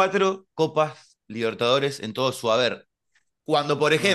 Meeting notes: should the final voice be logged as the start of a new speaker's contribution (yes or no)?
no